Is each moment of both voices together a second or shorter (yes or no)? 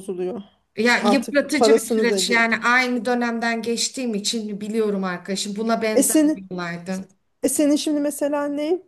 no